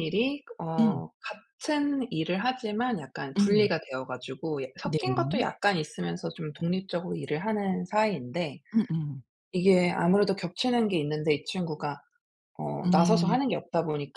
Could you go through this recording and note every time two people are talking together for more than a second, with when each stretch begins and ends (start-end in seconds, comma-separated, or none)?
none